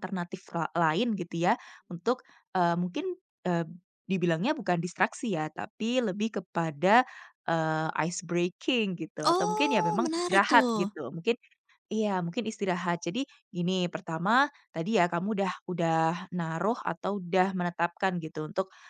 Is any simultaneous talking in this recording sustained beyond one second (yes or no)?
yes